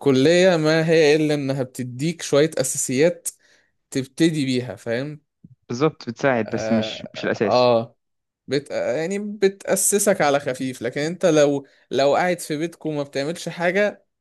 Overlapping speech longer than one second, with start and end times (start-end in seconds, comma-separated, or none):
6.4-7.7